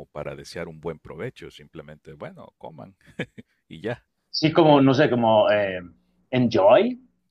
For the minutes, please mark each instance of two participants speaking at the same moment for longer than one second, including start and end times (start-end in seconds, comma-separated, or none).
none